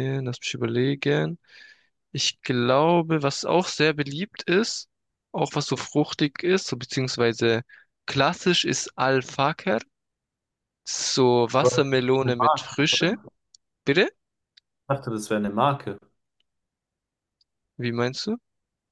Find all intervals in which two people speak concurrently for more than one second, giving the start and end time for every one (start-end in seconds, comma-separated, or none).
11.6-13.2